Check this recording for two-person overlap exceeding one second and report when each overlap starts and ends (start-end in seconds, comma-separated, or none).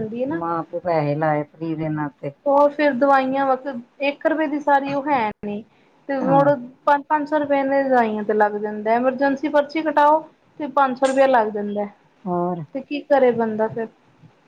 none